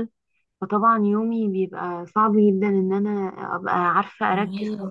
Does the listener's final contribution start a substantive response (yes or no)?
no